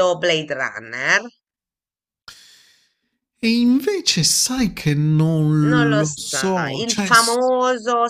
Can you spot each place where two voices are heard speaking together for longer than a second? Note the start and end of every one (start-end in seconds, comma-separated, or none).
5.6-7.4